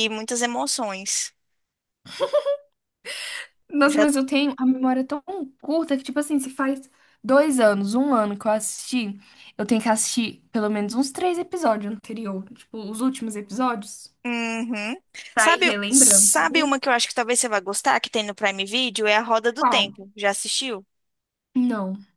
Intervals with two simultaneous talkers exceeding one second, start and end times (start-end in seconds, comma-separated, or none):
15.3-16.7